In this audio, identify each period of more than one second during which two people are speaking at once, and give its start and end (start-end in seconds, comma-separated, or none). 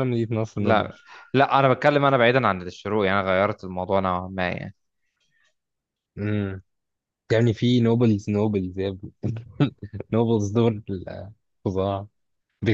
none